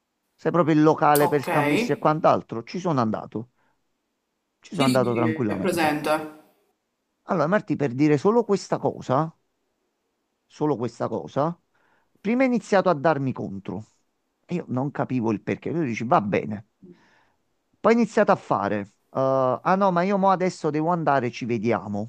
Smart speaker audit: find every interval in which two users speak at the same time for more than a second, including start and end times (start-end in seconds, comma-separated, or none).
4.7-5.9